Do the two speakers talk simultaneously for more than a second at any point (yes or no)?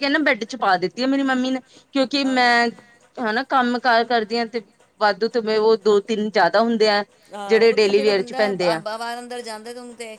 no